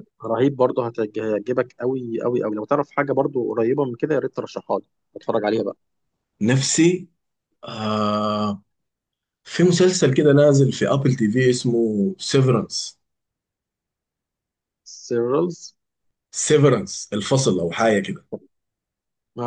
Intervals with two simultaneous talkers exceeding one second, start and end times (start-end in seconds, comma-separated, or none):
none